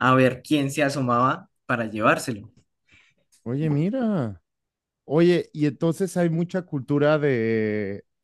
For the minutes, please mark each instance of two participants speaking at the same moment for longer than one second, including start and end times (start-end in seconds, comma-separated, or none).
none